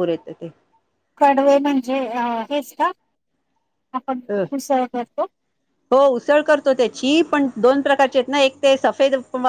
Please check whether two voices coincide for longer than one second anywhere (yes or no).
no